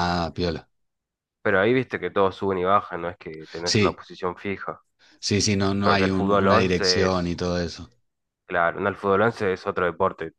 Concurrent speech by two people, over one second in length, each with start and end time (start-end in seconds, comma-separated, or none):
5.8-7.3